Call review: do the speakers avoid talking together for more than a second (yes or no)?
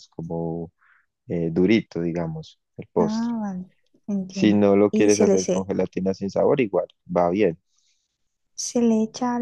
no